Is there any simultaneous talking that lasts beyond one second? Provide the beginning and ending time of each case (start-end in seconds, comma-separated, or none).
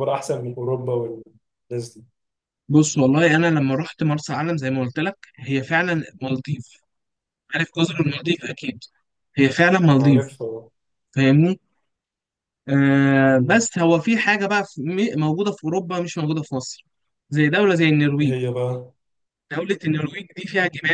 none